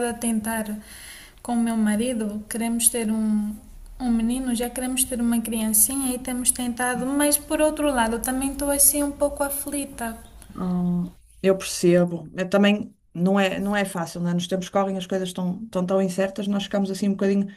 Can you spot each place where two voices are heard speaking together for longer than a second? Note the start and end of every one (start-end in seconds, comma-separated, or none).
none